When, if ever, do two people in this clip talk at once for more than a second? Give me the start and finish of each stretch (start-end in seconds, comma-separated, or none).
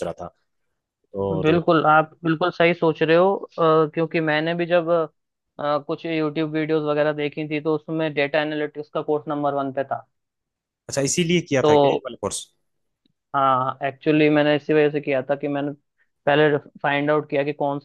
none